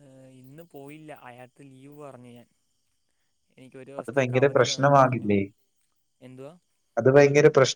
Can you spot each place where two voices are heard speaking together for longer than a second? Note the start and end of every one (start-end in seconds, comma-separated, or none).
4.0-5.3